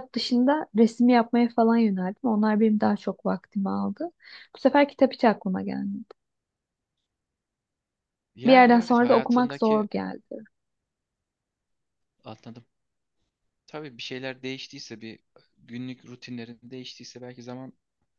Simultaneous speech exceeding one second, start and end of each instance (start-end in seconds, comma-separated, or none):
8.5-9.9